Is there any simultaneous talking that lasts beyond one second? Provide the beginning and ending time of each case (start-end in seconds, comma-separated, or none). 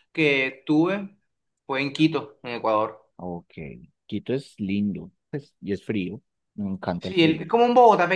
none